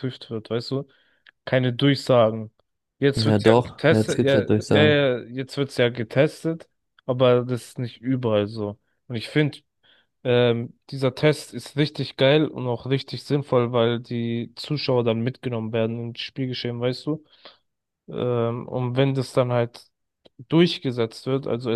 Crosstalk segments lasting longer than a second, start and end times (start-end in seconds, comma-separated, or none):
3.1-5.0